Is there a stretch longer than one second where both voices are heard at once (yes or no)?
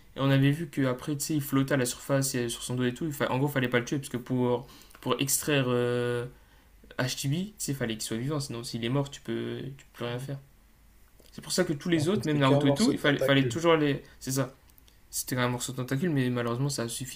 yes